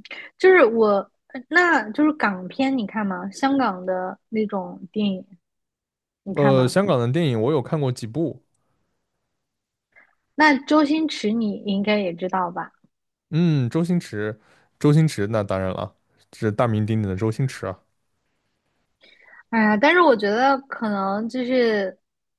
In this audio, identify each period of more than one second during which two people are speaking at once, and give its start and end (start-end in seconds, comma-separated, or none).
none